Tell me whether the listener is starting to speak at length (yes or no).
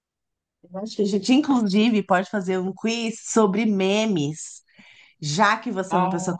no